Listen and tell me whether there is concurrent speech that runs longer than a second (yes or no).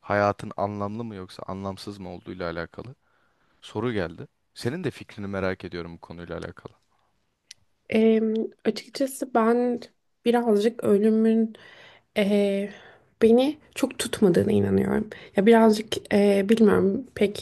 no